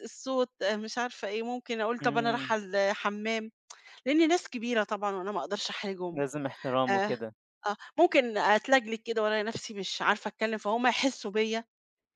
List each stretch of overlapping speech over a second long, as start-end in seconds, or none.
none